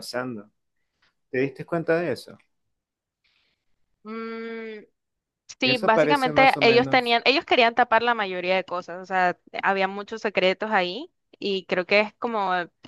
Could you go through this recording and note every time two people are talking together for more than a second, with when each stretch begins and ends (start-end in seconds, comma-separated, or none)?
5.6-7.2